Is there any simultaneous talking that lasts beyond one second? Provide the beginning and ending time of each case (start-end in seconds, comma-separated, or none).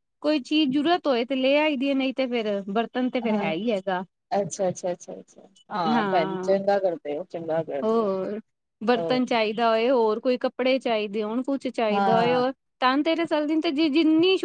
none